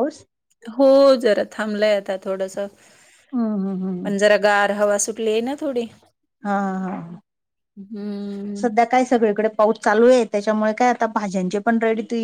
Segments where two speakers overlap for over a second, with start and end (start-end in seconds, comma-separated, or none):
none